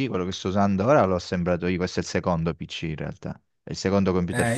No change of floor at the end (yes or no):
no